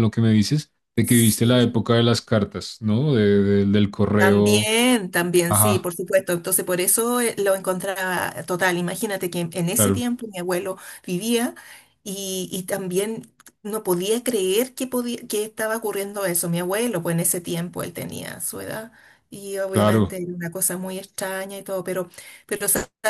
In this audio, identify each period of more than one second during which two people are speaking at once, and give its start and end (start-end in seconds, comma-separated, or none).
none